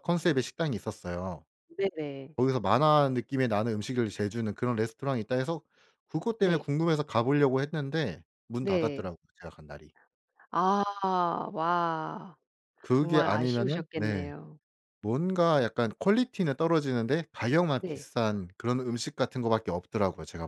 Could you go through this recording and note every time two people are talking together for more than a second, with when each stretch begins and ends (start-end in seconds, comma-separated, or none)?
12.9-14.3